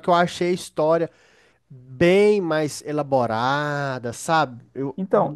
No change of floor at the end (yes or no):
no